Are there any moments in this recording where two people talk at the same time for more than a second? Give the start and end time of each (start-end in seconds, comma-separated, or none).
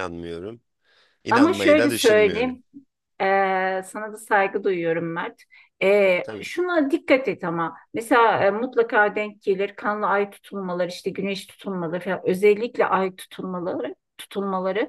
1.3-2.6